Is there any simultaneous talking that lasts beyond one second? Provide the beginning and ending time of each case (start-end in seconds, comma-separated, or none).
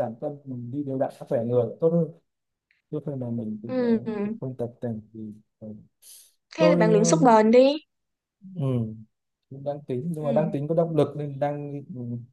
none